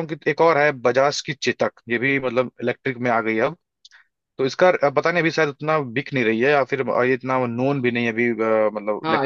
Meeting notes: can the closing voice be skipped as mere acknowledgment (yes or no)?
no